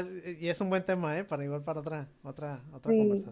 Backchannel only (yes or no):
no